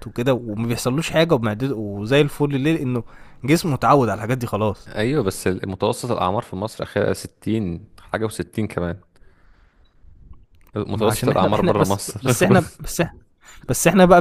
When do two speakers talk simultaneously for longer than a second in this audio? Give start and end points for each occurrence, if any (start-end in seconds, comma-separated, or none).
10.9-12.3